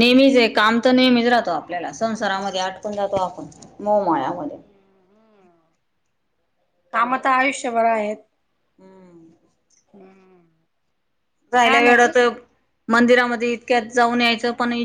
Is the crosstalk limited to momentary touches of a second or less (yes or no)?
yes